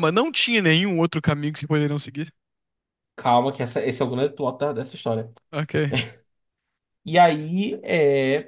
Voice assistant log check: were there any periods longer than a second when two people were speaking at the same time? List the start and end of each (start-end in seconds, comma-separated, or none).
none